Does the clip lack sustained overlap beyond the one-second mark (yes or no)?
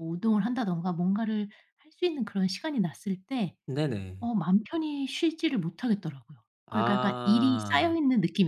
no